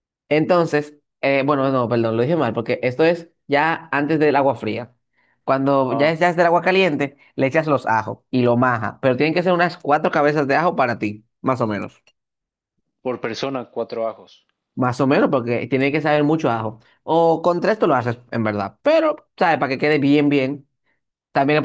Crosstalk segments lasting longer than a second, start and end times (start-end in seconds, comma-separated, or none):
none